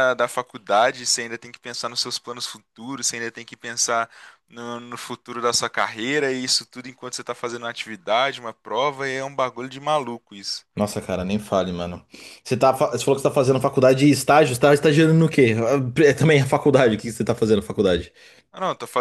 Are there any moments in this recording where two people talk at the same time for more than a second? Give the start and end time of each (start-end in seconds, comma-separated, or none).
none